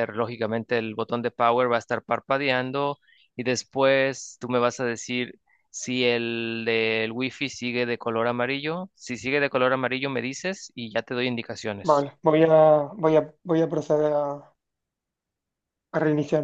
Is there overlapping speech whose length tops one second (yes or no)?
no